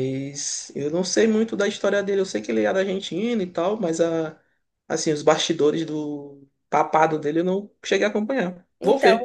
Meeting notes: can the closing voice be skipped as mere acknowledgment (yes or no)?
no